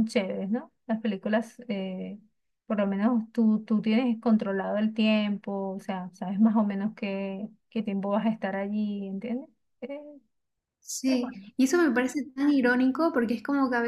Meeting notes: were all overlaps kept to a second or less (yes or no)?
yes